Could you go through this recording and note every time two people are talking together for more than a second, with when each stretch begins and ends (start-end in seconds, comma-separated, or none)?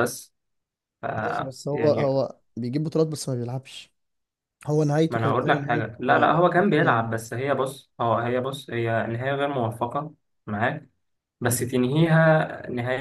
5.1-7.1